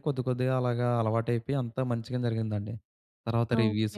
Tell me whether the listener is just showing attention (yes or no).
yes